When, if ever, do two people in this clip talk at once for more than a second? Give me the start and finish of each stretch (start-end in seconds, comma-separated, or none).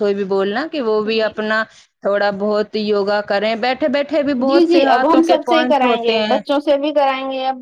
4.5-6.4